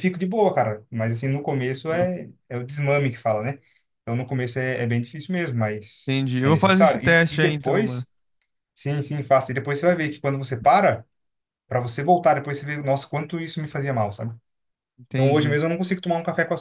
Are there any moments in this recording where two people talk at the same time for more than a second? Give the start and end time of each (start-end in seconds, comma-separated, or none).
6.0-8.0